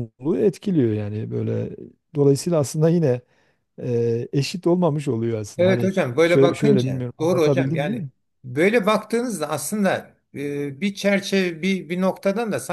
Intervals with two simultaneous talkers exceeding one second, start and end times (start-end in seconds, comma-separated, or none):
5.6-8.1